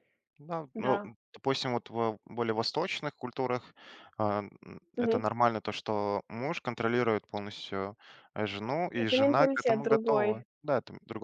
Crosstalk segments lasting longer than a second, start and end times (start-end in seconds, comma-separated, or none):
8.9-10.4